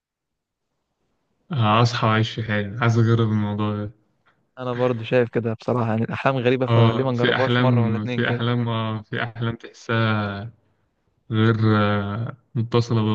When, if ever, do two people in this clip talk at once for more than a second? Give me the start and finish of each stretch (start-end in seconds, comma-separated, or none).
6.7-8.4